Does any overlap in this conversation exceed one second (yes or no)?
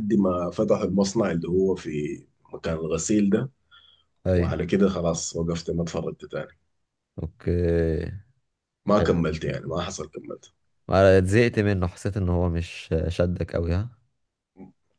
no